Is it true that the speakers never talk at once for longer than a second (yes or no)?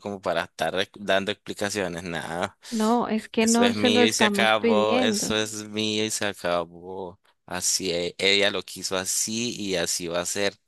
no